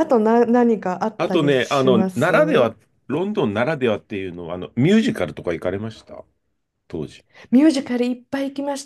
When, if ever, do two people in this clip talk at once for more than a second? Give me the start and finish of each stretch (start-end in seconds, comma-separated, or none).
1.2-2.7